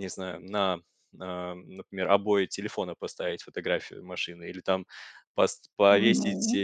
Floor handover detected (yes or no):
no